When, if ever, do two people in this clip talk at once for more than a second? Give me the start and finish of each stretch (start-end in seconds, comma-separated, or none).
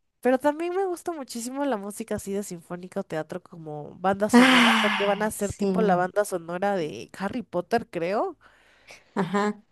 4.4-5.7